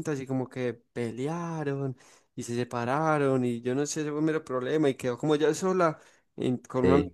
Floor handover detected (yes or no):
no